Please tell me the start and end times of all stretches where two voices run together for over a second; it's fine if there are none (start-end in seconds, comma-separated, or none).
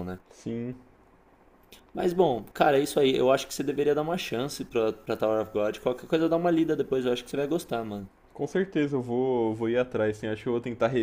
none